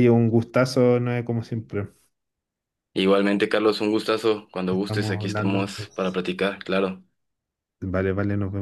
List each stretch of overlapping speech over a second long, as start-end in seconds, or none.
4.7-6.2